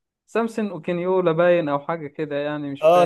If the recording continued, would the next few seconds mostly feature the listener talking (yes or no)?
yes